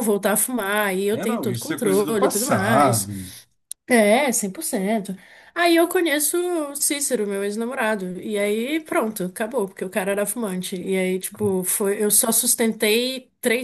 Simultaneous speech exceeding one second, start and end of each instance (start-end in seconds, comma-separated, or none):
1.1-3.1